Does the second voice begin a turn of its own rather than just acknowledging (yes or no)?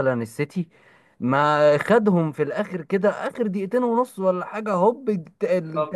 no